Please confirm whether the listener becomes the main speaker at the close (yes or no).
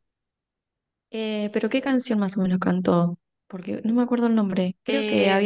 no